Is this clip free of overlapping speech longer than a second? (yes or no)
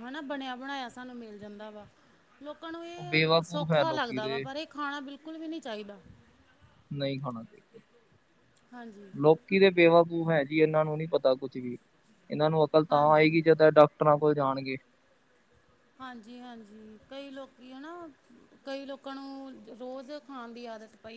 no